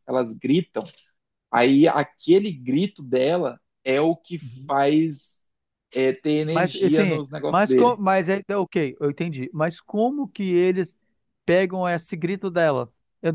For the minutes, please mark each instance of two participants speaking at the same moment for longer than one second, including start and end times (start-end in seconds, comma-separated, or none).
6.5-8.0